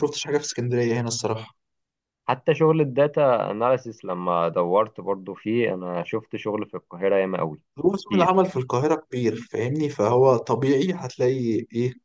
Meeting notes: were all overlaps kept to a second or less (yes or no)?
yes